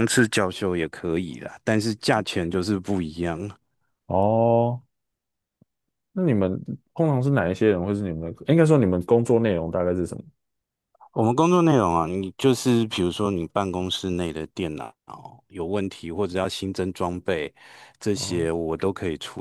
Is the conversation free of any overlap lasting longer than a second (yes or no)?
yes